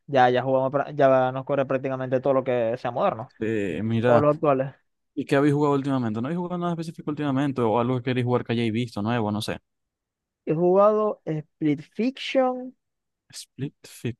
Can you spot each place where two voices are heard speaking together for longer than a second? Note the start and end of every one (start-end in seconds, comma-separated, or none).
none